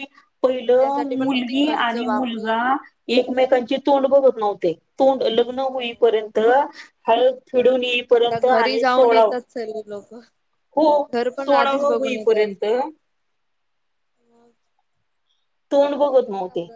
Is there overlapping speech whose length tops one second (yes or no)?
yes